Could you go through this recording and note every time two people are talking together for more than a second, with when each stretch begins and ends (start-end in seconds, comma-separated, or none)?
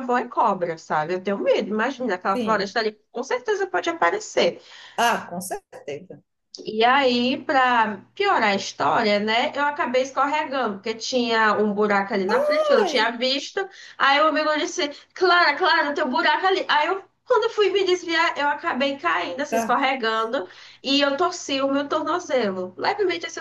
none